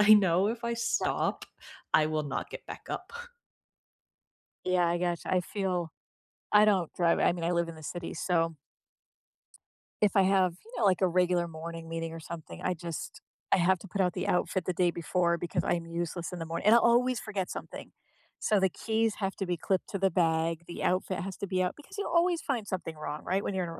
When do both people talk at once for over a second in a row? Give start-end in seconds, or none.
none